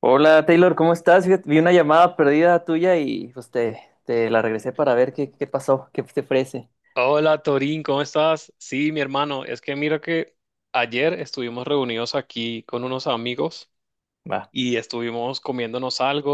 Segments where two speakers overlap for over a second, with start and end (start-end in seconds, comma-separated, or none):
none